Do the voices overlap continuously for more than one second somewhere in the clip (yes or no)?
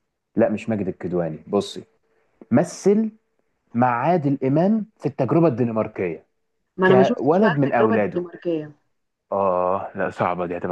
yes